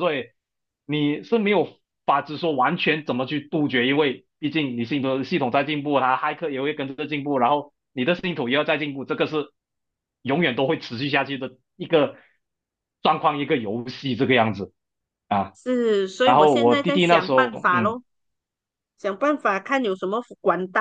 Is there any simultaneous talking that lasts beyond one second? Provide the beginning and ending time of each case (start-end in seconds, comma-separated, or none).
16.2-18.0